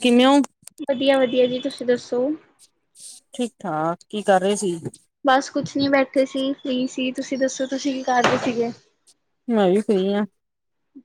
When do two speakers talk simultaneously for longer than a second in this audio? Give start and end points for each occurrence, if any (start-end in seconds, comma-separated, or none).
none